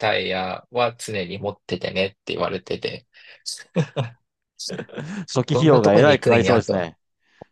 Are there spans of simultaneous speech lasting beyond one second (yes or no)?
yes